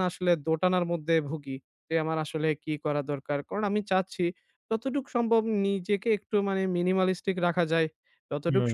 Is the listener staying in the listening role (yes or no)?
yes